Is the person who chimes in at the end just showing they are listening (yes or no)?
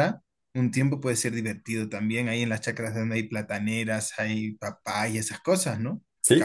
no